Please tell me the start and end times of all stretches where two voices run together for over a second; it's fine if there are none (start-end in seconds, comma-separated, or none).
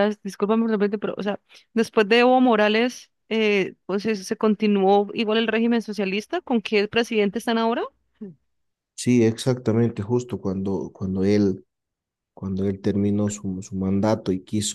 none